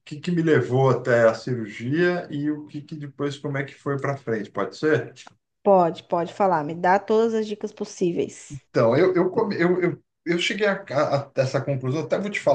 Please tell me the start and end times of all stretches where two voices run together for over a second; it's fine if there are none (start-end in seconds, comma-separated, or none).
none